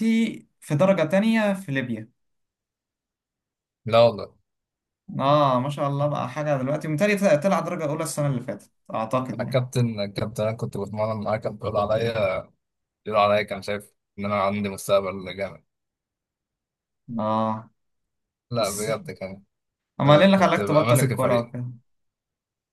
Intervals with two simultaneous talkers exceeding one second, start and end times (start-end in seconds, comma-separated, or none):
20.3-21.5